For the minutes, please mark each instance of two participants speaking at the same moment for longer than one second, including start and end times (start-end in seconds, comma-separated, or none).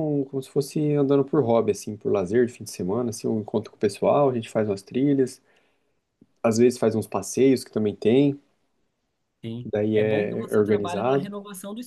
9.6-11.3